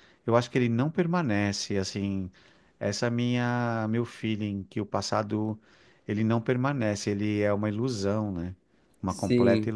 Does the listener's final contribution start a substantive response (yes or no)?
yes